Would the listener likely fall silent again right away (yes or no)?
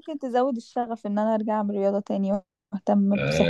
no